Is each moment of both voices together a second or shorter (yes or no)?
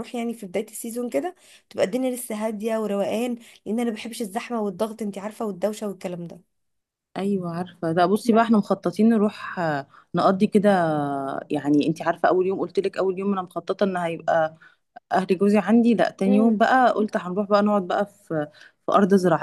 yes